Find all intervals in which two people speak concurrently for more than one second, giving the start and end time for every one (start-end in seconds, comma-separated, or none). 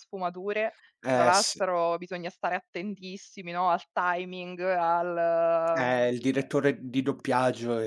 none